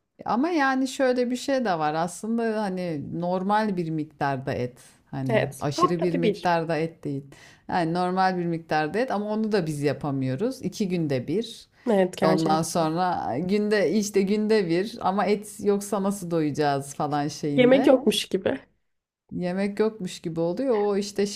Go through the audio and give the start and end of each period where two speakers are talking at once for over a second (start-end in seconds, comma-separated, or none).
5.3-6.6